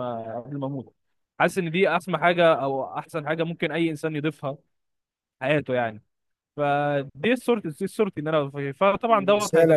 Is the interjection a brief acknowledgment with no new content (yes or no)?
no